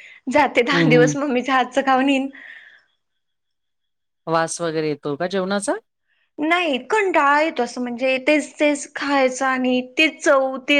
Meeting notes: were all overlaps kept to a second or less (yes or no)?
yes